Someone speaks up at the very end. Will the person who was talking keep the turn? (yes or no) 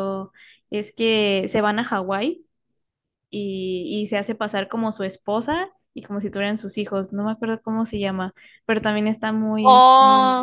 no